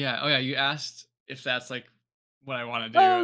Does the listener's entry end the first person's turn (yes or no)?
yes